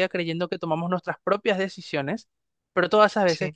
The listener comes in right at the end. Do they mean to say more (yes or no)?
no